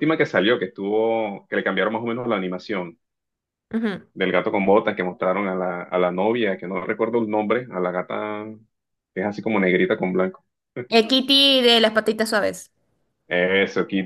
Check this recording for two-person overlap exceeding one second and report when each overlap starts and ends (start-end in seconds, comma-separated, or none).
none